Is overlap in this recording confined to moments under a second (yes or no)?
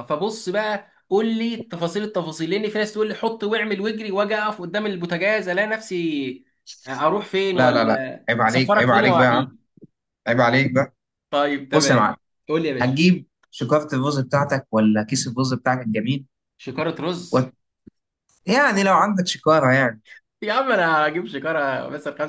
no